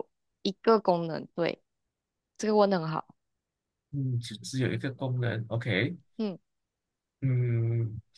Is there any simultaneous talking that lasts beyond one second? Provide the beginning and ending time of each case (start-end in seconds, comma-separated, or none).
none